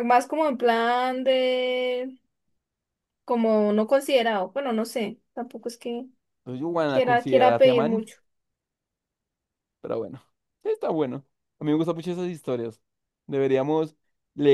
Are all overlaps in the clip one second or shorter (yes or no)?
no